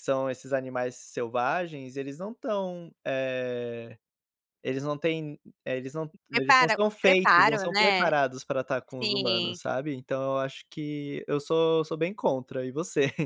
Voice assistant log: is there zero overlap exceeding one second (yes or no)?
no